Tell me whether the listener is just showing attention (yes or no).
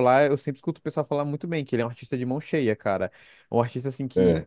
yes